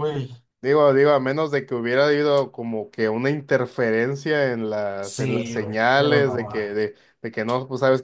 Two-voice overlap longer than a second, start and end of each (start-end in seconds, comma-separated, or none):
5.0-6.6